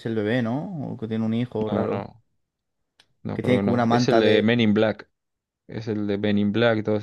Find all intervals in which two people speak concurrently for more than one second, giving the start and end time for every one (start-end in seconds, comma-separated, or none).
3.3-4.6